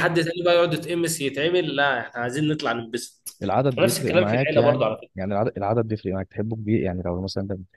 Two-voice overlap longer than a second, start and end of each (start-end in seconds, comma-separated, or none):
3.8-5.1